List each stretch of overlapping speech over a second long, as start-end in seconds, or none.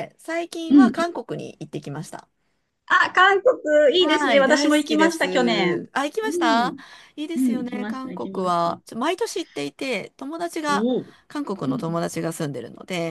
4.0-6.8, 7.4-8.7